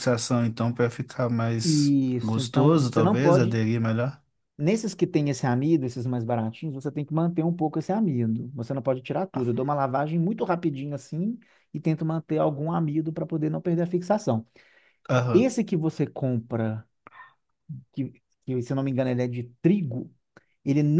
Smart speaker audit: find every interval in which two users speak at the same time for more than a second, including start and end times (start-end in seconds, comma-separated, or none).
1.6-3.6